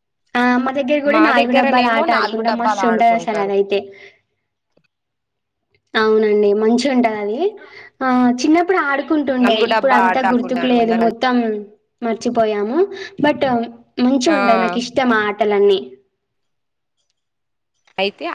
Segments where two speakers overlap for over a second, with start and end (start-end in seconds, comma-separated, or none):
1.1-3.5, 9.4-11.2